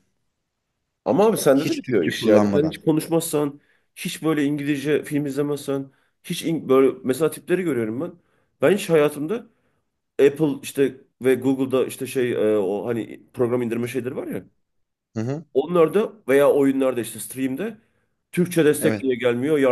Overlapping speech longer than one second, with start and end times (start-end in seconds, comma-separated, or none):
1.5-2.8